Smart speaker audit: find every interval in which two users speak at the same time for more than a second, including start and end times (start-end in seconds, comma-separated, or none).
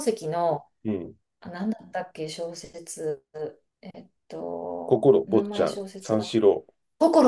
4.8-6.3